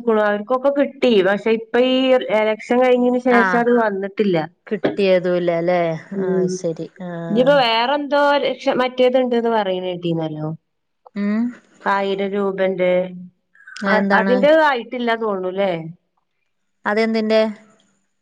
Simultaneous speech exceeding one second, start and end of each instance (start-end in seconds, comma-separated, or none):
none